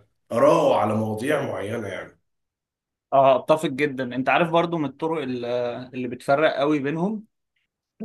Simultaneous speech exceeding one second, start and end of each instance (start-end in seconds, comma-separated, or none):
none